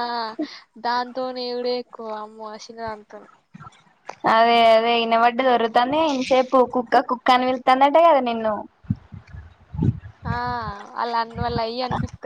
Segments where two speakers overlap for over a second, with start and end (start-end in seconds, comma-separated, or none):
none